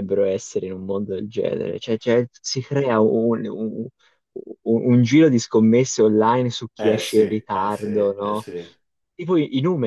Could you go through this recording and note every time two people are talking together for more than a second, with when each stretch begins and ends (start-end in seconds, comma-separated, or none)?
6.8-8.4